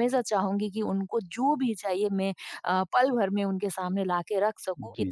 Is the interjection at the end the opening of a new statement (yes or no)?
no